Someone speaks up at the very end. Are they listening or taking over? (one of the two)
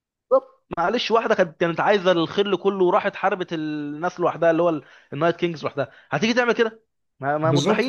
taking over